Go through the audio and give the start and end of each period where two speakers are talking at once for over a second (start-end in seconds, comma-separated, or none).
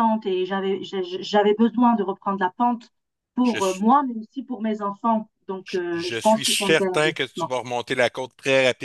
5.6-7.5